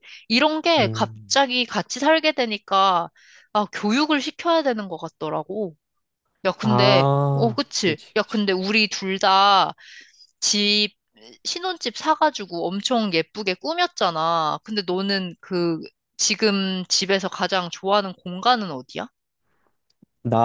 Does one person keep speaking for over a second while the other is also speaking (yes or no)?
yes